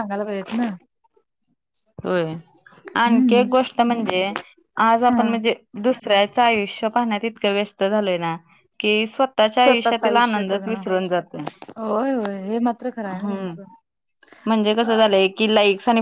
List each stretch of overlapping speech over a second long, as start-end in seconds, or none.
9.6-10.8